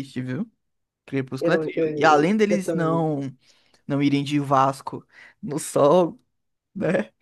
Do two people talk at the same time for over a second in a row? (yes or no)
yes